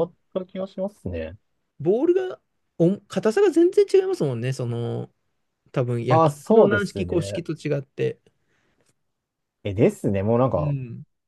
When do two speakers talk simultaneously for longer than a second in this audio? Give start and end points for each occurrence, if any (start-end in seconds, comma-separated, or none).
6.1-7.4